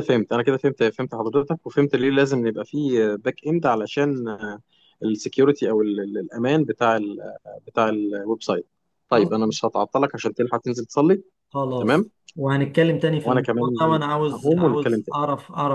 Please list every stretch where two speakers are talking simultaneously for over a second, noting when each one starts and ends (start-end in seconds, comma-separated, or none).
13.2-15.2